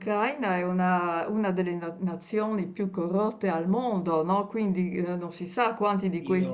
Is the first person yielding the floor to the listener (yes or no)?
no